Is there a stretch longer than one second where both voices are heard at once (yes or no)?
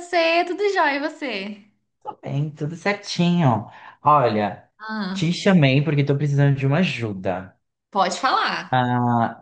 no